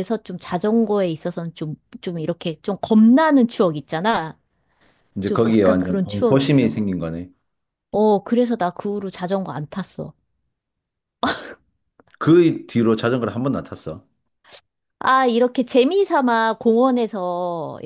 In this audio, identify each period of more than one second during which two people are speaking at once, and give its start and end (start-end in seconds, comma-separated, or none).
5.2-6.8